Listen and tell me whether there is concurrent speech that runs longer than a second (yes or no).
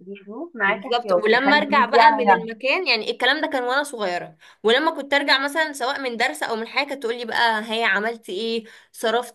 yes